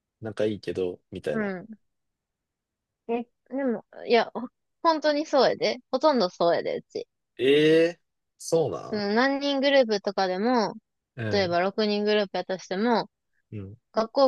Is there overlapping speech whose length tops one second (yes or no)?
no